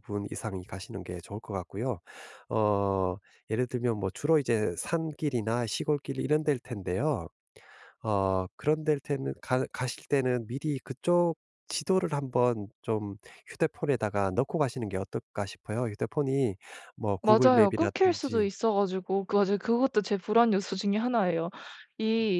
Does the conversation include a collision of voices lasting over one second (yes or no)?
yes